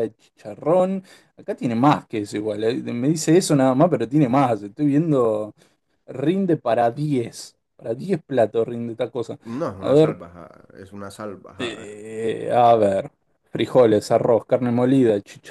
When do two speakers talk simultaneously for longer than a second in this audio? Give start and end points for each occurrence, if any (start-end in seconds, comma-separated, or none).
none